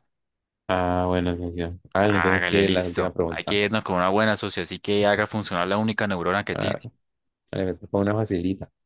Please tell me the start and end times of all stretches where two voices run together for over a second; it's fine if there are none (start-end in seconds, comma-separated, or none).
2.0-3.6